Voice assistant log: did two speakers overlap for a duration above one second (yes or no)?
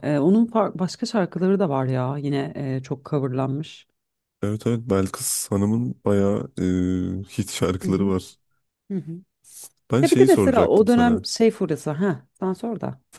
yes